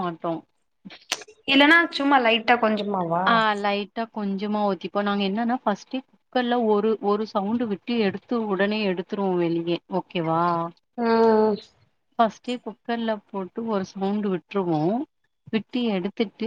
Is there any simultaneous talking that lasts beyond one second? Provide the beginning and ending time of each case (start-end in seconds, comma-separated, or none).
none